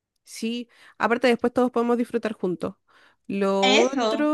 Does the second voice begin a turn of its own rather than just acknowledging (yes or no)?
no